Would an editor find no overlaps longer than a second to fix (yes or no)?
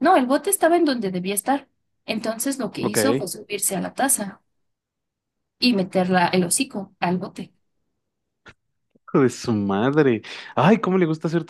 yes